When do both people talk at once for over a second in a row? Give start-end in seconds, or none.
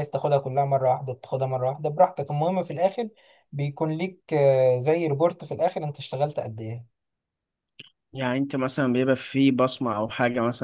none